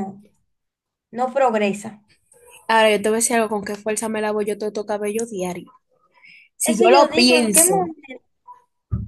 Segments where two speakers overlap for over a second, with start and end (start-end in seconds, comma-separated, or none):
6.6-7.9